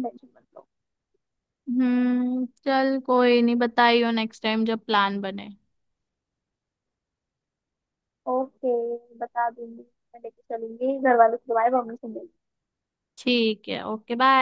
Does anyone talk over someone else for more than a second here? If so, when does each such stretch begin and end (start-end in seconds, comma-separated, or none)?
none